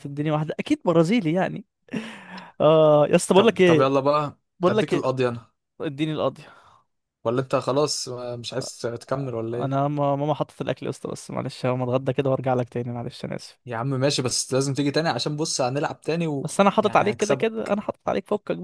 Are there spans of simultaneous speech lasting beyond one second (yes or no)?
yes